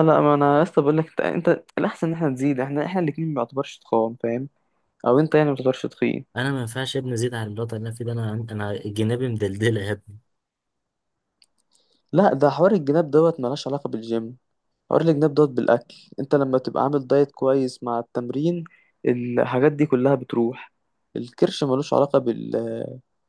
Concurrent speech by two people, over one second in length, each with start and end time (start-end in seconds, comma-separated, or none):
none